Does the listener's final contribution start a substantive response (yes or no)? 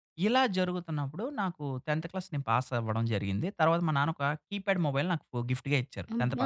yes